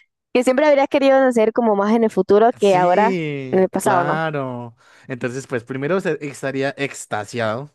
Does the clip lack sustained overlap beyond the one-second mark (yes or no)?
no